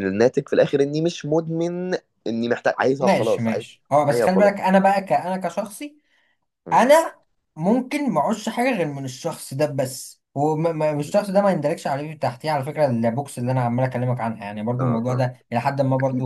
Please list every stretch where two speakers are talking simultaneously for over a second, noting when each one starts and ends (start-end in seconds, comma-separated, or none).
3.0-4.5